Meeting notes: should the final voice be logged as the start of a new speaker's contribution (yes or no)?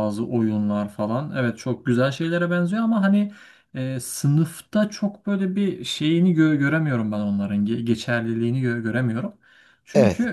no